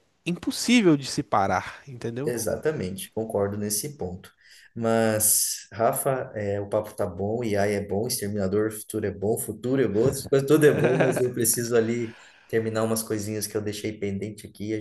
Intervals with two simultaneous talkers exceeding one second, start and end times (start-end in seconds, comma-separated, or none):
none